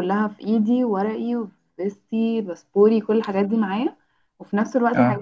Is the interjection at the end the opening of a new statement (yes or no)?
no